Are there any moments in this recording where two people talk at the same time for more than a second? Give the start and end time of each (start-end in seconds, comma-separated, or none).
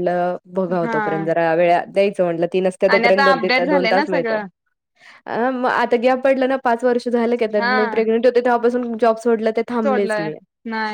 2.9-4.4